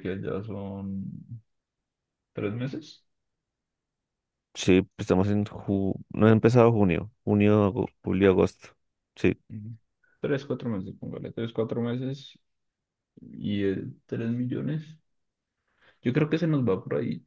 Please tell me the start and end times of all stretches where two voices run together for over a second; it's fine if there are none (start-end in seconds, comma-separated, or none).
none